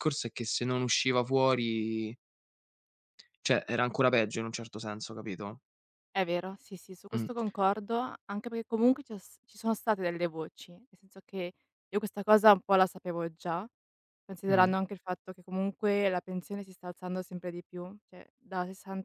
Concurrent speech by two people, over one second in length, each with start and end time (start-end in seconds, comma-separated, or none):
none